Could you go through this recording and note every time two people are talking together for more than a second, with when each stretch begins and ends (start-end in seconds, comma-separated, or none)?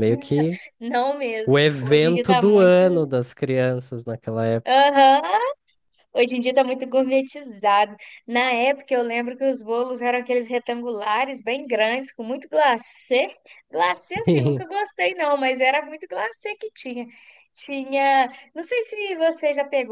1.4-2.7